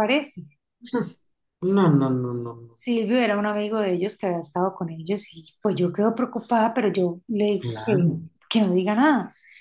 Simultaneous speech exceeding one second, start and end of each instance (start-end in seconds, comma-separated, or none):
none